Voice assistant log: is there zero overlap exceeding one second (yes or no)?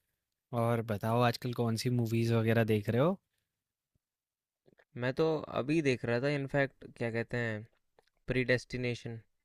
yes